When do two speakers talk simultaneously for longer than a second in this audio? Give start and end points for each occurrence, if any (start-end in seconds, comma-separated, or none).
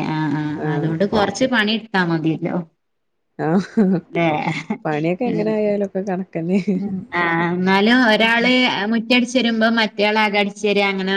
none